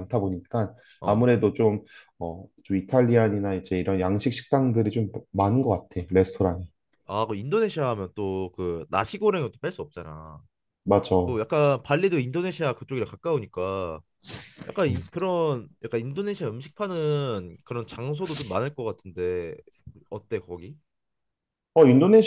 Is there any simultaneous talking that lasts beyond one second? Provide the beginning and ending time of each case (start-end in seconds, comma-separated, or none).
none